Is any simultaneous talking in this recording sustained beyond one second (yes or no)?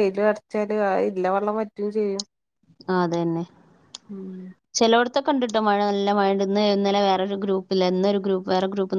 no